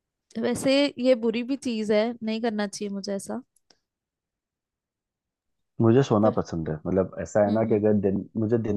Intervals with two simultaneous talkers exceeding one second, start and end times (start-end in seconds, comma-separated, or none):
none